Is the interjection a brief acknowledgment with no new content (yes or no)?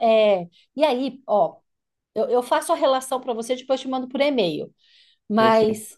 yes